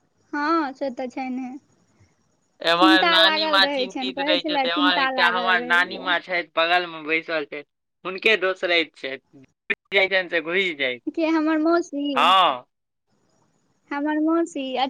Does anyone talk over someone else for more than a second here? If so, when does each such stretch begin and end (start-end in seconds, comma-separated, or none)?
3.6-6.3